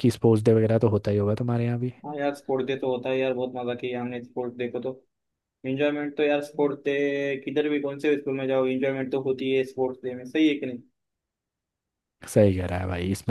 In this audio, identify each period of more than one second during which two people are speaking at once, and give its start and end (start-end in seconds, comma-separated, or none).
none